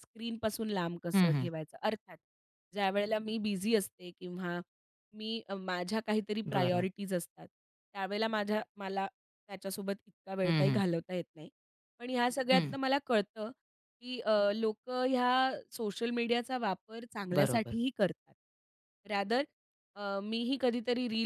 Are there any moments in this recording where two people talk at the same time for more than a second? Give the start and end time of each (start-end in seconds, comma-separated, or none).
none